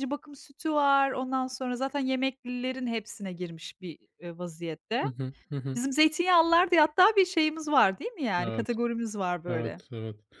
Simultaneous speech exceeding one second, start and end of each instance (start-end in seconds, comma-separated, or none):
none